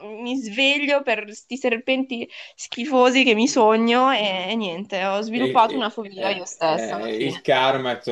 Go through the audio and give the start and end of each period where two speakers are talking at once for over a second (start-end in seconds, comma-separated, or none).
5.3-7.4